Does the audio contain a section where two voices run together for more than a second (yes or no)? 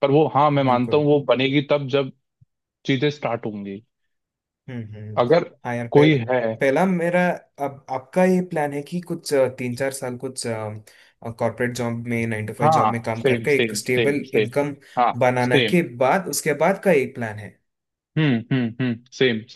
yes